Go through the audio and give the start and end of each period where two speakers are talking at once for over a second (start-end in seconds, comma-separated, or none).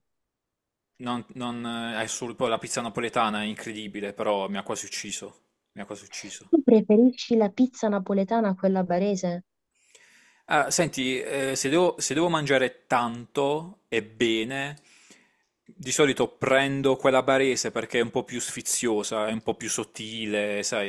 none